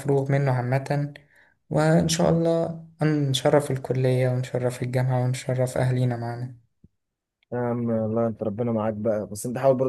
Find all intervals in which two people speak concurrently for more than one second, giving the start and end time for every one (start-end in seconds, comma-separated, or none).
none